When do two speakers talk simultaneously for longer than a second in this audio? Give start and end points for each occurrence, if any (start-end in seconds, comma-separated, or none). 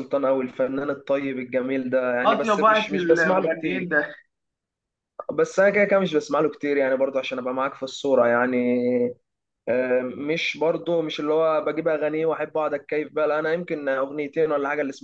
2.2-3.9